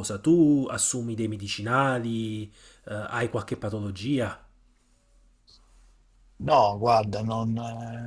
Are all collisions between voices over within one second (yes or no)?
yes